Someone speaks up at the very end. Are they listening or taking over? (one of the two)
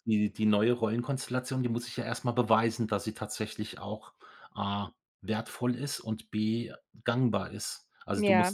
listening